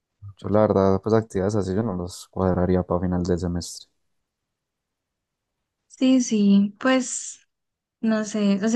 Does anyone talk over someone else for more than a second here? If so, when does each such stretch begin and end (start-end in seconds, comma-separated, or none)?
none